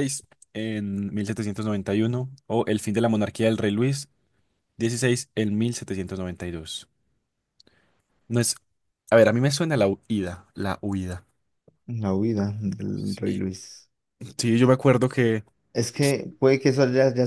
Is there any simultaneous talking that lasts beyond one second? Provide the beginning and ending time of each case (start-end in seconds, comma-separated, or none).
none